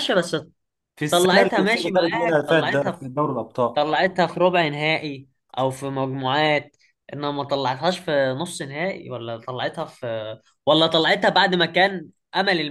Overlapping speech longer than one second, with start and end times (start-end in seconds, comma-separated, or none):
1.1-3.0